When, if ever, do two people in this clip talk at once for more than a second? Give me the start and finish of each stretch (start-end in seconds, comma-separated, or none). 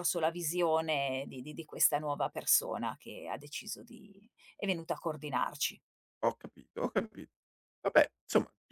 none